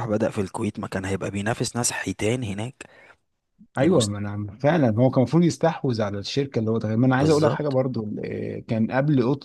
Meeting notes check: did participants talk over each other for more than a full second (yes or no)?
no